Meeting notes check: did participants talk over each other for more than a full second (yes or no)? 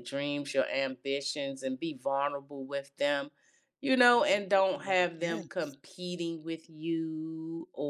yes